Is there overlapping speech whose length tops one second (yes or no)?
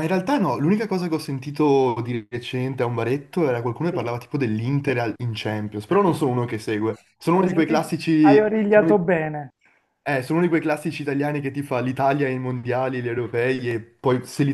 yes